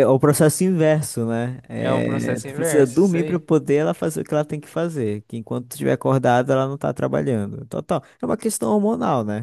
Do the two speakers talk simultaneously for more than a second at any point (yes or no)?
yes